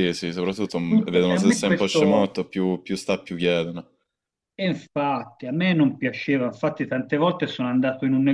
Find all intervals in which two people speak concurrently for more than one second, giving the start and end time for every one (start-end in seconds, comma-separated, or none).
0.9-2.4